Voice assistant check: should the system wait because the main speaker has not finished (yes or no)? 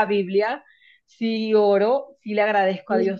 yes